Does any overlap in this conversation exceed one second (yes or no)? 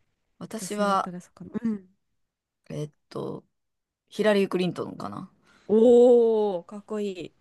no